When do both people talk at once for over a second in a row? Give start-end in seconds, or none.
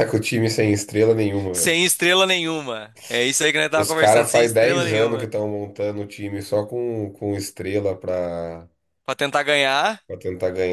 3.8-5.3